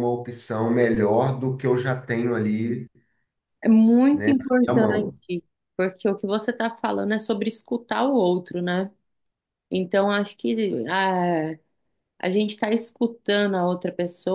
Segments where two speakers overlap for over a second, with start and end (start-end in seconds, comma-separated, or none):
none